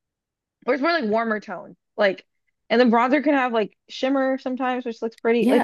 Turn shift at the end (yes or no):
yes